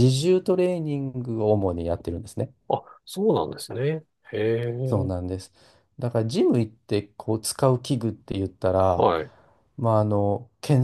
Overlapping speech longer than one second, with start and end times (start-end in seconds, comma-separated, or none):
none